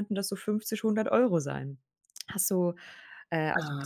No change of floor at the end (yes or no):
yes